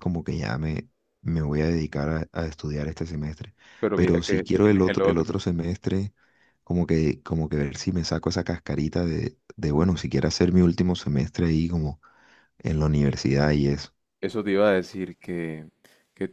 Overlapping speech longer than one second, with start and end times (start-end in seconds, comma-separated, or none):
3.9-5.2